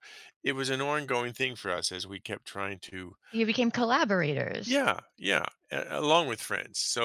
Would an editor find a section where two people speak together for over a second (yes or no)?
no